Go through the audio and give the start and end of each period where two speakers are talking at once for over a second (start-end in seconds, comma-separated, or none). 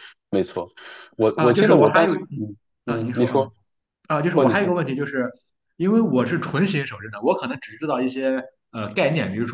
1.4-3.5